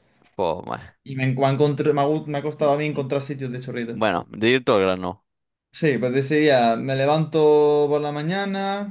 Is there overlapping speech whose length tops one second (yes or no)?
no